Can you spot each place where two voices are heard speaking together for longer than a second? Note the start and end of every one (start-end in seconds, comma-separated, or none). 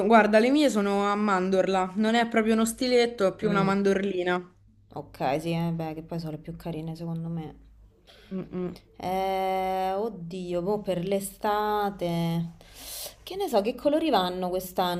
none